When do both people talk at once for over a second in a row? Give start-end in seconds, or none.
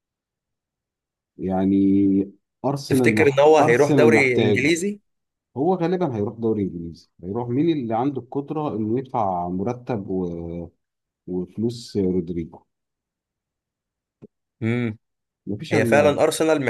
2.9-4.7